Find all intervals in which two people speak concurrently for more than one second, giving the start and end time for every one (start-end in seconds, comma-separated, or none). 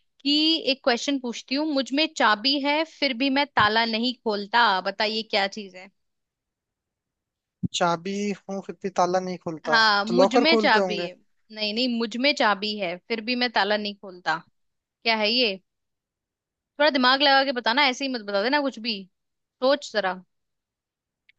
9.7-11.1